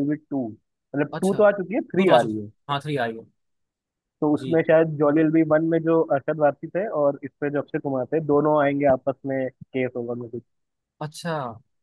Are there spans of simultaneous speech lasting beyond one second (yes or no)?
yes